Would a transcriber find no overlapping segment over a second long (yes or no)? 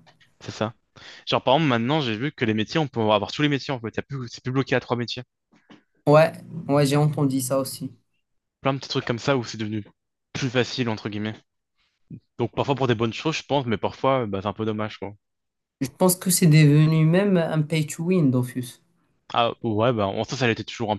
yes